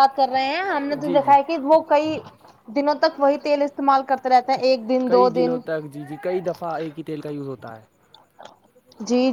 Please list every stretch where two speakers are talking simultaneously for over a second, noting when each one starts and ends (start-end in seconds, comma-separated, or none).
none